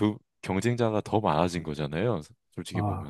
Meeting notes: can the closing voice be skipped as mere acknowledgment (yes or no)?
no